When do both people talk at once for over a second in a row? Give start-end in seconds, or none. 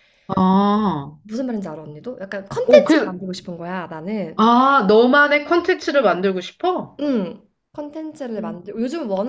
none